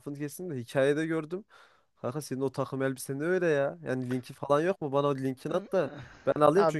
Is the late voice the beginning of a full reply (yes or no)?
no